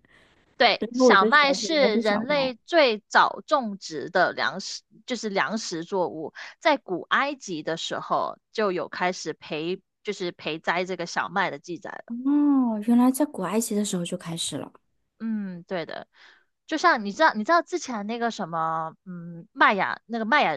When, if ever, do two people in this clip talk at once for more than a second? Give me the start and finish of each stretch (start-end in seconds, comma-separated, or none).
0.8-2.5